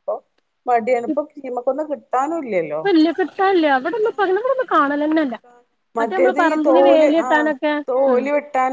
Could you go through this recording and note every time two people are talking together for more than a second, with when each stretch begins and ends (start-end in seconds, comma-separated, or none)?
none